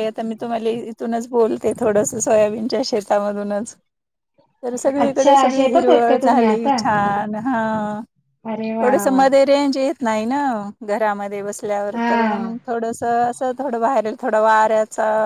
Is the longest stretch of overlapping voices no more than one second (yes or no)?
no